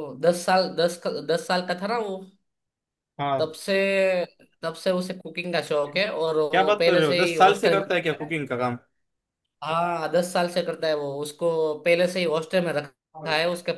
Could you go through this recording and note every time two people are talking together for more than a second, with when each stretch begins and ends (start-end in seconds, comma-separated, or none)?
6.5-8.3